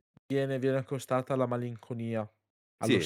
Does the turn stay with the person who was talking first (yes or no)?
no